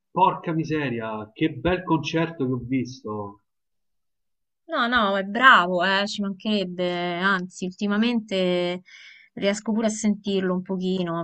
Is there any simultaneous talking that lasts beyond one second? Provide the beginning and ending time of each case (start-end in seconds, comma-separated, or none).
none